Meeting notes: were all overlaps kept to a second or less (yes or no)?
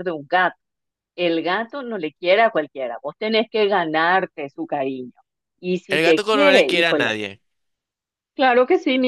no